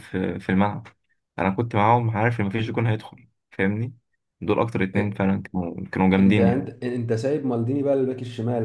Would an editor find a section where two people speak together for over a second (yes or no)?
no